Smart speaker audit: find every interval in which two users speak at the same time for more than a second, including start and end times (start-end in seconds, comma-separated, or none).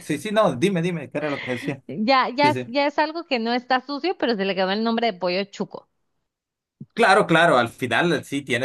none